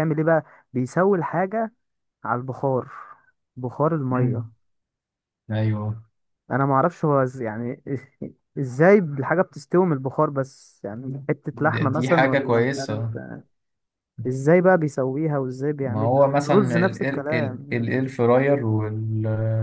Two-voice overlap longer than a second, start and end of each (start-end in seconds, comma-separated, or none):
11.5-13.2, 15.8-17.9